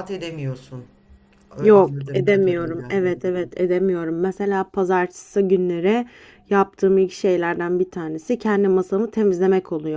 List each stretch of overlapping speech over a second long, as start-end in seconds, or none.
1.6-3.0